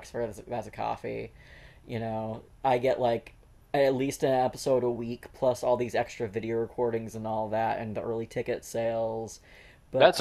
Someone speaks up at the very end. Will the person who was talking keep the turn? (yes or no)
no